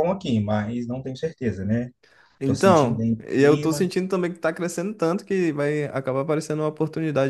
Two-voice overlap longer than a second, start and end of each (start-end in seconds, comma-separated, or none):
2.4-3.9